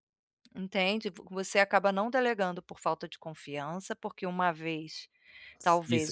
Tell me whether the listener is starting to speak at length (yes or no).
yes